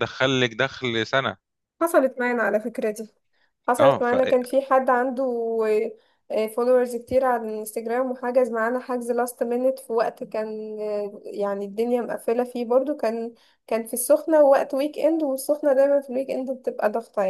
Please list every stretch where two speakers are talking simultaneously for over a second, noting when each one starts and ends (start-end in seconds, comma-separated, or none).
none